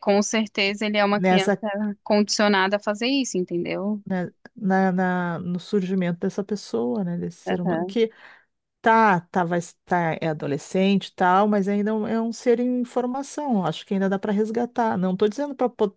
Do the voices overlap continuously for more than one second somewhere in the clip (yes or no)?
no